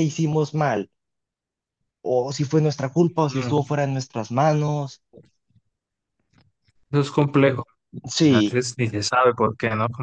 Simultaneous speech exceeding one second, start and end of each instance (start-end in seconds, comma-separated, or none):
none